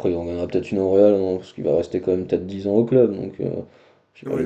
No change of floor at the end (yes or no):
no